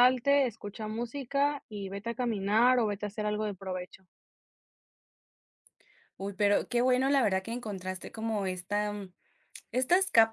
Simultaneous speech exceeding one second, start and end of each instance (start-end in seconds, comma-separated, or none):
none